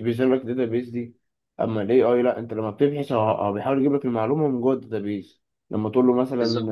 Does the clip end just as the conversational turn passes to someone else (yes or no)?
no